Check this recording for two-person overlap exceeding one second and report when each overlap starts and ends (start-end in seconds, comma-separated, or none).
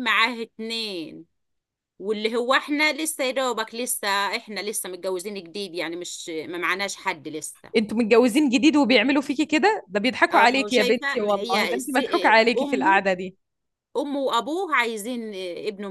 10.3-13.0